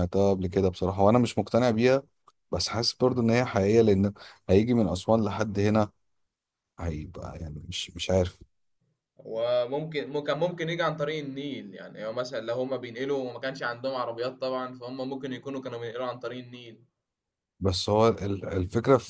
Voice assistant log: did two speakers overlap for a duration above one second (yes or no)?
no